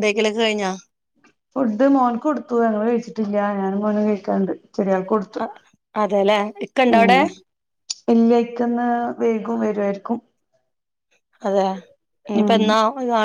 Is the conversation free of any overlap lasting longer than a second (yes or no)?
yes